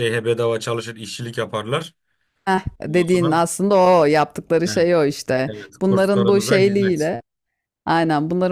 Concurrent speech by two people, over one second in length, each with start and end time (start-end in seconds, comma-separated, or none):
5.5-7.1